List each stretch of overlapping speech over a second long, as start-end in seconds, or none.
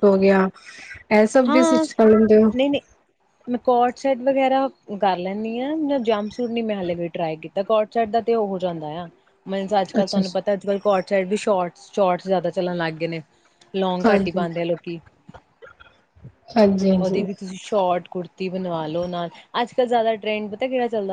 none